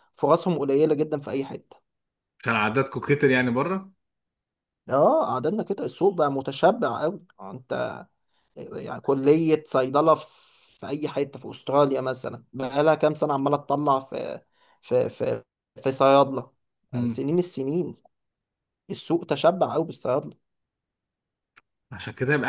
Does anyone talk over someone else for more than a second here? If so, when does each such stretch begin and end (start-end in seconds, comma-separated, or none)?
none